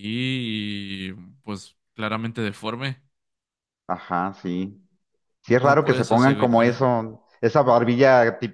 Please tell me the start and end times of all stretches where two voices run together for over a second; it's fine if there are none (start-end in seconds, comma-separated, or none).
5.5-6.9